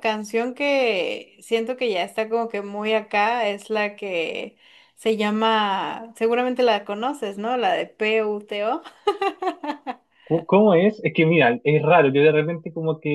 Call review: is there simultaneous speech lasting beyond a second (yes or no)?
no